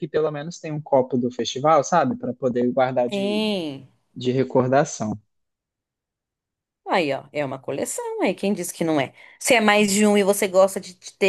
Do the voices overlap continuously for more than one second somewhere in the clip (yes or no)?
no